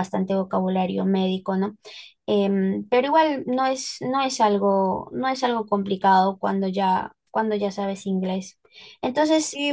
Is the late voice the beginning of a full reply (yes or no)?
yes